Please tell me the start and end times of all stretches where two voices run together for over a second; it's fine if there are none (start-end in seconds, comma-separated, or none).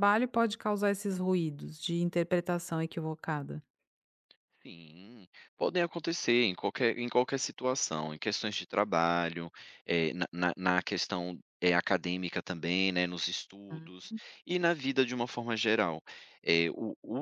none